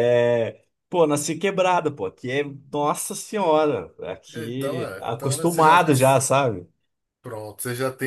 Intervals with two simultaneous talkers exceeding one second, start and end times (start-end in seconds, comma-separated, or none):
4.3-5.7